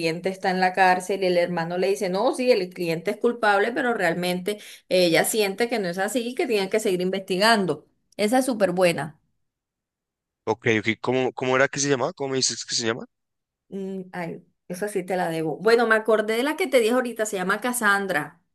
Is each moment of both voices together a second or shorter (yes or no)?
yes